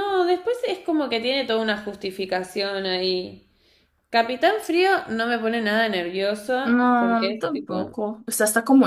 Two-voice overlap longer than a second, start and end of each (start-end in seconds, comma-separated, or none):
6.6-8.0